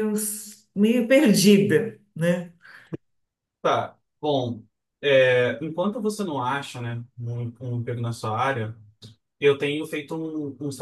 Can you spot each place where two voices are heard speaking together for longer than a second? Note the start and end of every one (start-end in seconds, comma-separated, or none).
none